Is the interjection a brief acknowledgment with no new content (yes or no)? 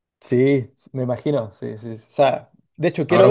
no